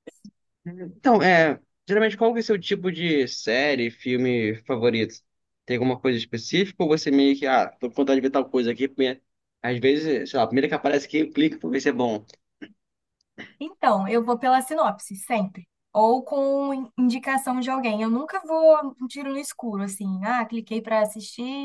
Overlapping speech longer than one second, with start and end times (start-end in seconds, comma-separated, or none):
none